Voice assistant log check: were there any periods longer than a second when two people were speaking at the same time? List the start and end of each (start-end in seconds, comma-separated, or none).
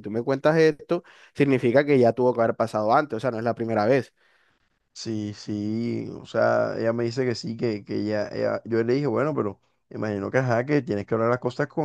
none